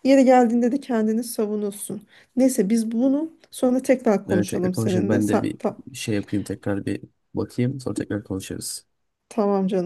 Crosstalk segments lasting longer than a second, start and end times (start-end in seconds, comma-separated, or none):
4.3-5.8